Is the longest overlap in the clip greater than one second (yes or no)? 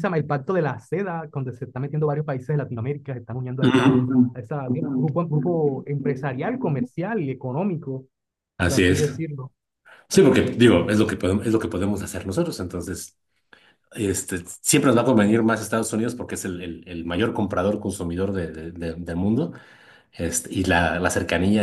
no